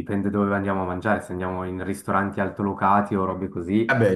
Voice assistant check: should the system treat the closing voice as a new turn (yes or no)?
no